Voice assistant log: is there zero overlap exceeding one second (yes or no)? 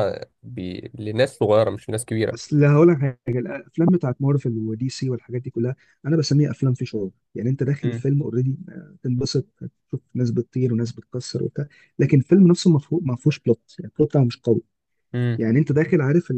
yes